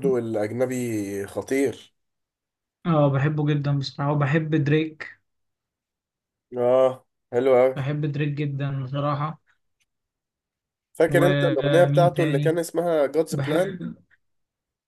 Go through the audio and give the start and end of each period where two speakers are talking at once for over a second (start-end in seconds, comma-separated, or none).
11.1-12.6